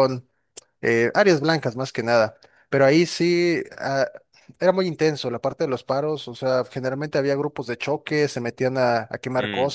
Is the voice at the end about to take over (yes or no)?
no